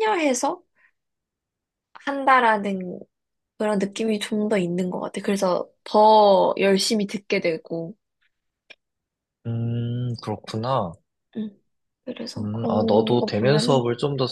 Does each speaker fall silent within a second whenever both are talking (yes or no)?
no